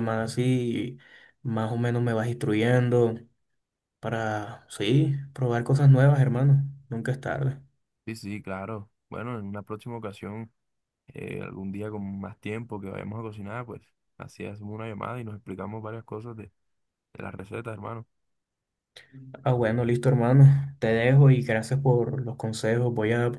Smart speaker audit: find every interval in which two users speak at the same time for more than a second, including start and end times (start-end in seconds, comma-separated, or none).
none